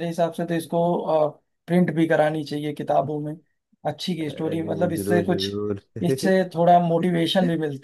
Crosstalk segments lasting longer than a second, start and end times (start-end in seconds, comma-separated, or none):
4.3-5.5